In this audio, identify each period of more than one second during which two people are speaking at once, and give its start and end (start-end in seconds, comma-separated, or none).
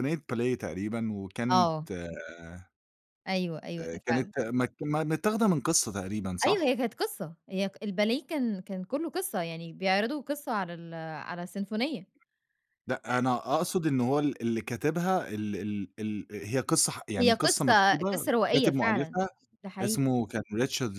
17.2-19.2